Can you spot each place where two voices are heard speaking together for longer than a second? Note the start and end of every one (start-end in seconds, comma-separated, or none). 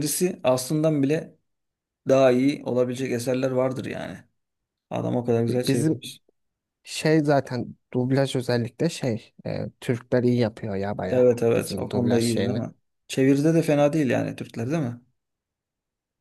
11.1-12.6